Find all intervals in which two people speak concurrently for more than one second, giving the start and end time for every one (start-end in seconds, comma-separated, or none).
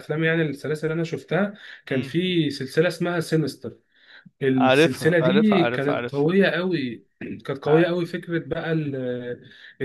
4.5-6.3